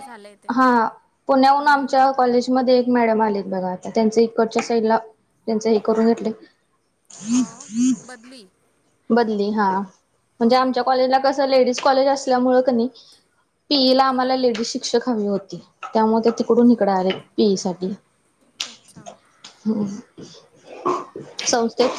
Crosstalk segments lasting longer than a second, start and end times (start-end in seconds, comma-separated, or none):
none